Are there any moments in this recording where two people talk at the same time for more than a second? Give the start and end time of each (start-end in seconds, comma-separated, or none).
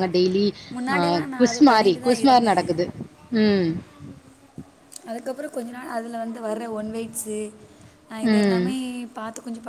0.9-2.7